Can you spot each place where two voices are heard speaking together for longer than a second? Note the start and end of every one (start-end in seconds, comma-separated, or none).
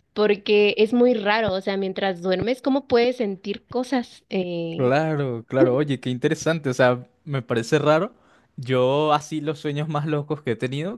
none